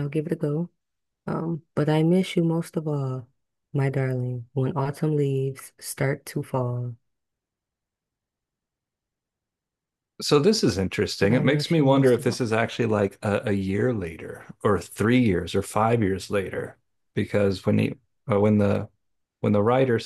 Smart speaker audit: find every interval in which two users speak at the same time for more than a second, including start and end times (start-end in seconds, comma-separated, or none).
11.2-12.4